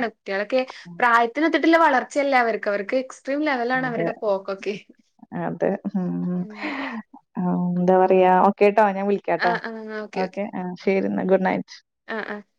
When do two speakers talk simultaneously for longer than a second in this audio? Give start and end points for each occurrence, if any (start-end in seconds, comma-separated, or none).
none